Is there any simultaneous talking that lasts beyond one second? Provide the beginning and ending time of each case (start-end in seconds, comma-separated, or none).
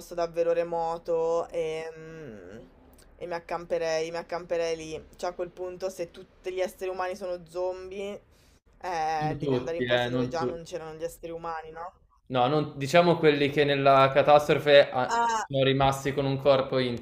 9.2-10.6